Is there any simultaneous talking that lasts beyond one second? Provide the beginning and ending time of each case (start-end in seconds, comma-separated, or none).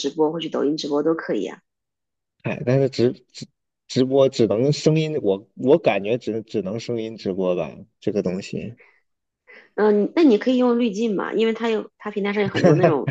none